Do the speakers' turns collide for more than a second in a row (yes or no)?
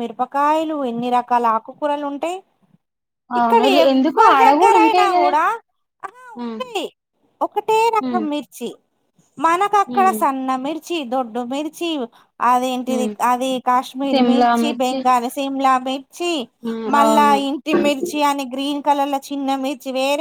yes